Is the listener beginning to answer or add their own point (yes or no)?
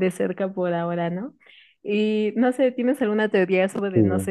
no